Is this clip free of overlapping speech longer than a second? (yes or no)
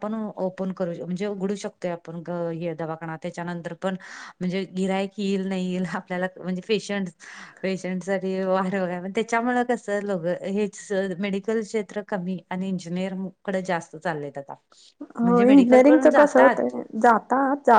no